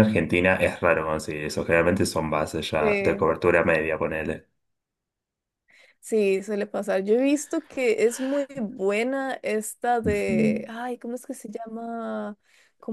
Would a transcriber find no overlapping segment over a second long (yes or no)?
yes